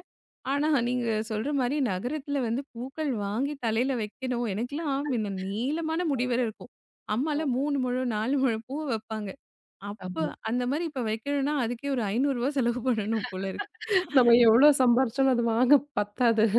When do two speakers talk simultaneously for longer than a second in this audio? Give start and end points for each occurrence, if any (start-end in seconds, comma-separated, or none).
none